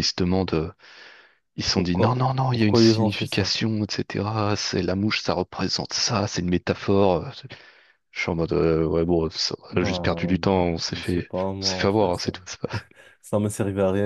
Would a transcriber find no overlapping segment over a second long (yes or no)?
no